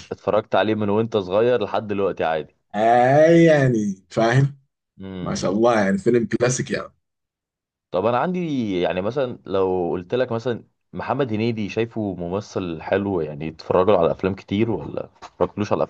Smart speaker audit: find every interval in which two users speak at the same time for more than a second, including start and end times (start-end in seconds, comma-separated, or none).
none